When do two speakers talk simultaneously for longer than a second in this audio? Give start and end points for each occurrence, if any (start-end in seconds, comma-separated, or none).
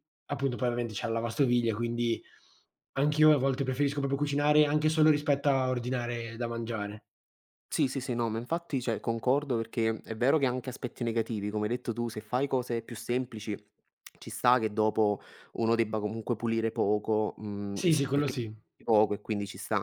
none